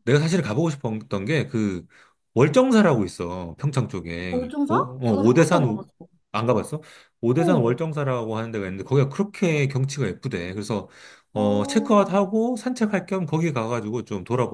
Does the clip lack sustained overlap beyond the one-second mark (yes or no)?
no